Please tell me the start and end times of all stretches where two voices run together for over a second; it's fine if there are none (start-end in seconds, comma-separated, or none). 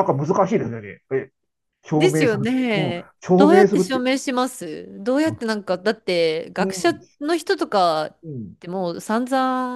1.9-4.0